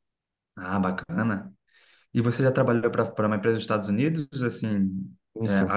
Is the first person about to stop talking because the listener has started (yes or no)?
no